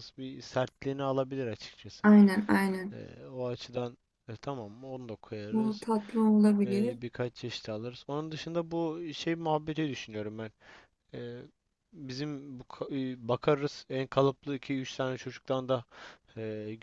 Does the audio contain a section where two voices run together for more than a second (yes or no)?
no